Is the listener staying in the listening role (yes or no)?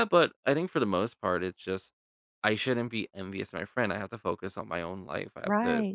no